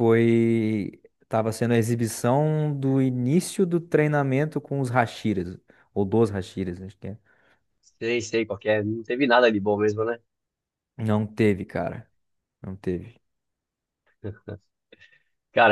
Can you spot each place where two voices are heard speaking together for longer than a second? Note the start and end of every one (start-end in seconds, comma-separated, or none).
none